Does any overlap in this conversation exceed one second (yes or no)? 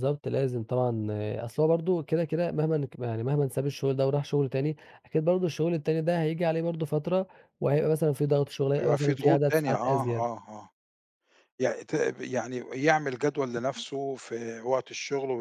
yes